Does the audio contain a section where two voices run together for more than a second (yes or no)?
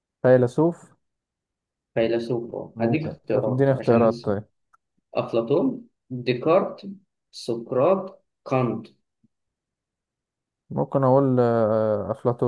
yes